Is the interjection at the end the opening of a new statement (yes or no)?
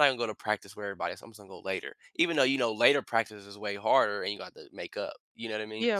yes